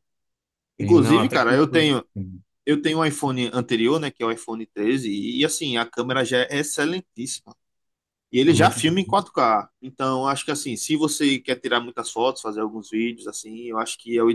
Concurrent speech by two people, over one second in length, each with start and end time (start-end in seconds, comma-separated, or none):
0.8-2.0